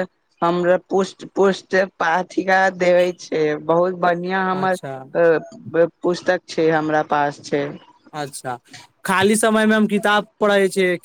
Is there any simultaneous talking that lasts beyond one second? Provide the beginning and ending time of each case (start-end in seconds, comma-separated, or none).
none